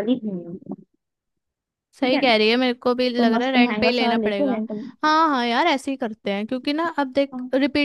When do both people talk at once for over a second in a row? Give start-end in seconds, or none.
3.2-4.6